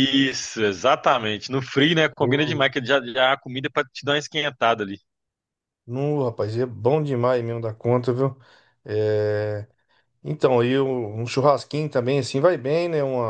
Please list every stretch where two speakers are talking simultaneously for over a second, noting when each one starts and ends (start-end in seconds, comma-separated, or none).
none